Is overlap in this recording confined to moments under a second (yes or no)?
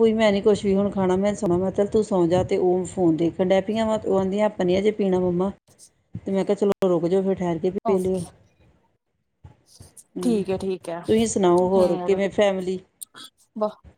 yes